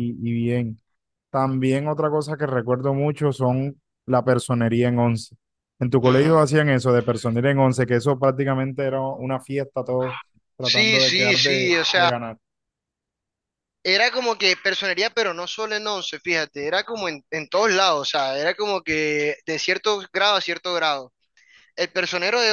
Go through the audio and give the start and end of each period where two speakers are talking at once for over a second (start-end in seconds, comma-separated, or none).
10.6-12.1